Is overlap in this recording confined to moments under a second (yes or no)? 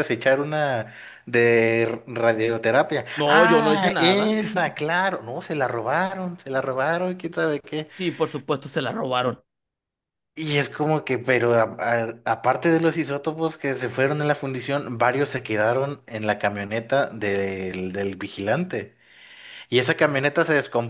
no